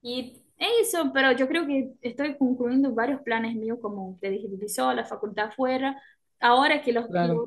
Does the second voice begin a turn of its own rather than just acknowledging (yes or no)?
no